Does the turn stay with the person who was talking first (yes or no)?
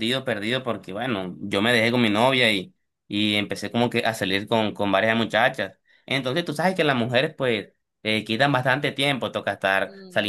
yes